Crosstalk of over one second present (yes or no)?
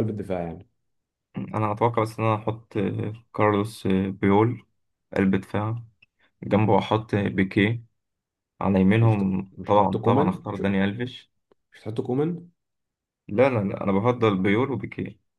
yes